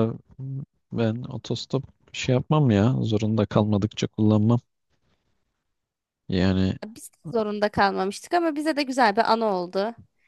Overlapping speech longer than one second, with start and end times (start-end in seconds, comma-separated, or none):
none